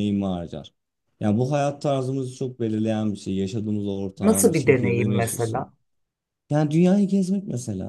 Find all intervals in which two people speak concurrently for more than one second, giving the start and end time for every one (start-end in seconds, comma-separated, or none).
4.2-5.7